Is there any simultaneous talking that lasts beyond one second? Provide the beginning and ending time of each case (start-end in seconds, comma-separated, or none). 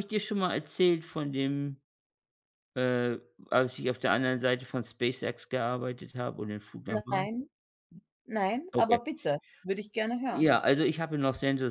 none